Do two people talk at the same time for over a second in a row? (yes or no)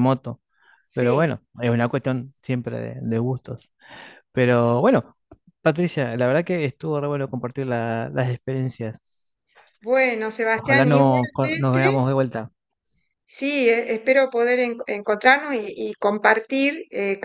yes